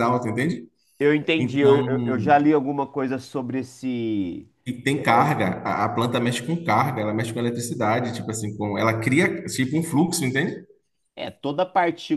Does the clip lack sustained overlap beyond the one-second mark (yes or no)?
yes